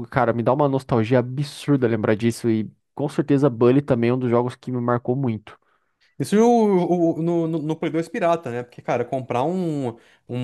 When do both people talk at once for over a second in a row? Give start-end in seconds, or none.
none